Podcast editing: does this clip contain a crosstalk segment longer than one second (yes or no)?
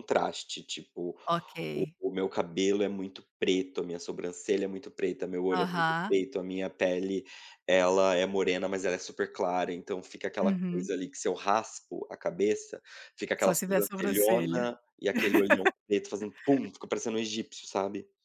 yes